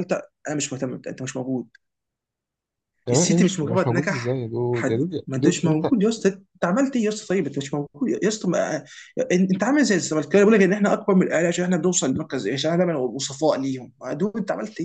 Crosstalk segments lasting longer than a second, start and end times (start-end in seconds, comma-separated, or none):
3.1-5.9